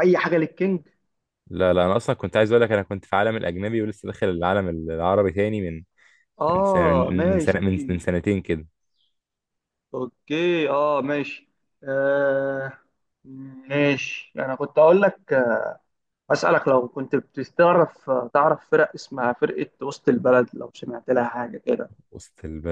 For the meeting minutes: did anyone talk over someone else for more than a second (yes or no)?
yes